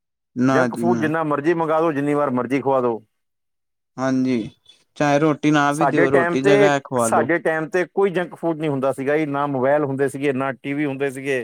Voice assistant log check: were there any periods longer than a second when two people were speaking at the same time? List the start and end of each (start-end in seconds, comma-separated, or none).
5.8-7.3